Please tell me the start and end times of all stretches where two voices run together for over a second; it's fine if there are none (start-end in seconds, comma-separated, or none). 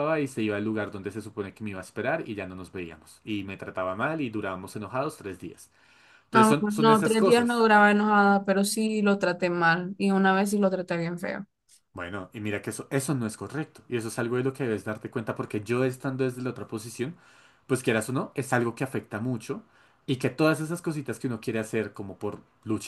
6.3-7.7